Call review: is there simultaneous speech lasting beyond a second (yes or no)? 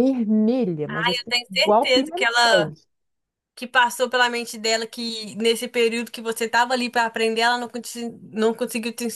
yes